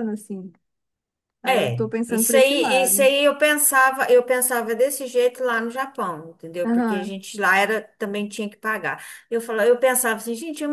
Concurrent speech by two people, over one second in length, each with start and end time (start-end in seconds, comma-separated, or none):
1.4-3.1